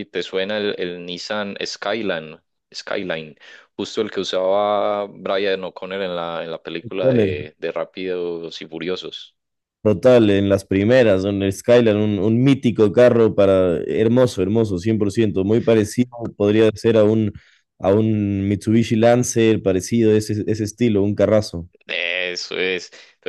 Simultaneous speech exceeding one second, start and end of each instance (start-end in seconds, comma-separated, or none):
none